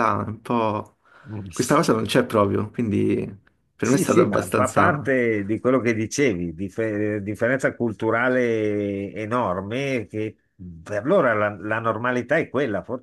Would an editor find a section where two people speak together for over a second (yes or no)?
yes